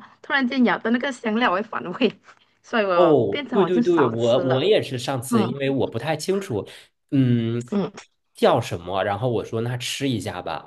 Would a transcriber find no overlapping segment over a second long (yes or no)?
no